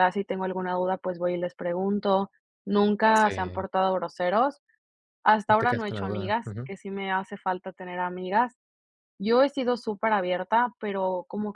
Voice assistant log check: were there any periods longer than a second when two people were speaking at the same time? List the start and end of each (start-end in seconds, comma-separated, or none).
5.5-6.7